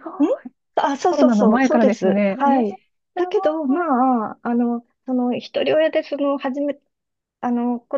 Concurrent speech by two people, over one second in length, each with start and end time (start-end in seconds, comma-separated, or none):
1.1-2.7